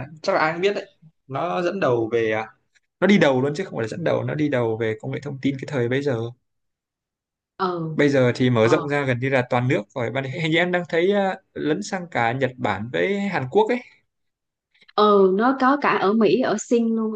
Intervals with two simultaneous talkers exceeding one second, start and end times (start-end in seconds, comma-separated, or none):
none